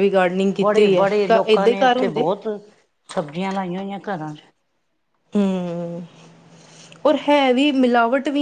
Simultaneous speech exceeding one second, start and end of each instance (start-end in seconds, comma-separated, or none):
0.6-2.3